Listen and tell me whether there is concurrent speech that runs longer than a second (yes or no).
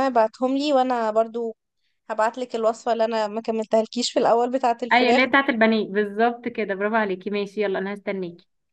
no